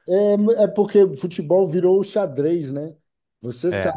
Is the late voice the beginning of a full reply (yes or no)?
no